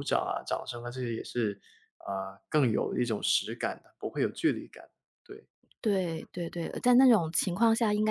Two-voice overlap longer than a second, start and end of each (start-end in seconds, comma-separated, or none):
none